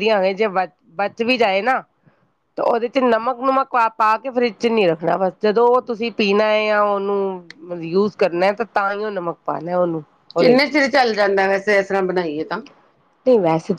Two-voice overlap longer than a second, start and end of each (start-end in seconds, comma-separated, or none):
none